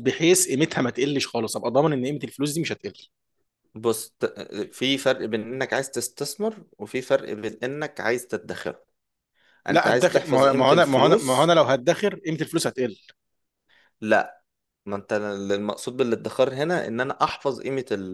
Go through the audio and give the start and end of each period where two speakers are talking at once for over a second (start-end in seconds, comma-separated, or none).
9.7-11.5